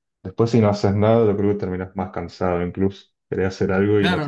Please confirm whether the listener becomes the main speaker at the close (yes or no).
yes